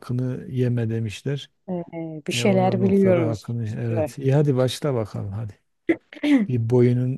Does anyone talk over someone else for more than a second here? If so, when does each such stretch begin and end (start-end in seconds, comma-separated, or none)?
2.3-4.1